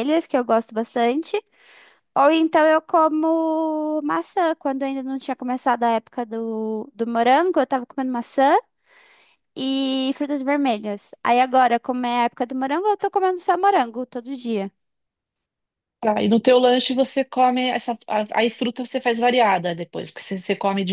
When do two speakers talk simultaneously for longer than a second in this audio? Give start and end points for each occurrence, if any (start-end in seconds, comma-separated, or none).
none